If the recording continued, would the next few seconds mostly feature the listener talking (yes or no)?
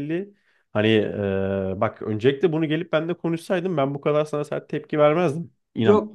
yes